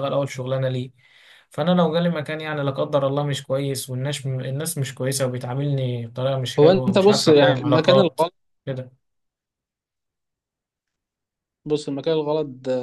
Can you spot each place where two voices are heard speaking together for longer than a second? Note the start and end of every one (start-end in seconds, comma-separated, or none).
6.6-8.2